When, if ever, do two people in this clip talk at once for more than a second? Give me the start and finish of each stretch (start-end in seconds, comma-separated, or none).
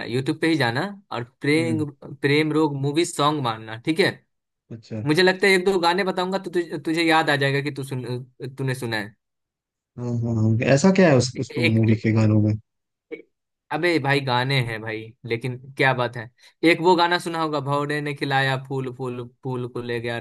none